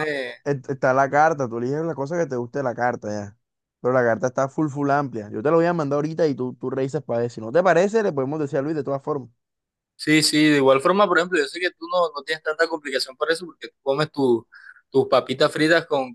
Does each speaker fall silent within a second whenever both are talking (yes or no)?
yes